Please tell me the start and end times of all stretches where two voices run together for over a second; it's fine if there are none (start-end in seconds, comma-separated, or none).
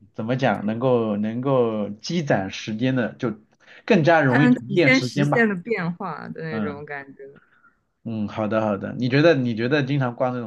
4.3-5.5